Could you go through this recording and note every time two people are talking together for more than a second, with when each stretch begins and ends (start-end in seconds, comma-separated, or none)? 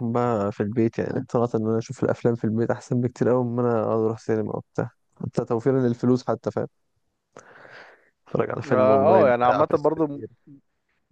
8.7-10.2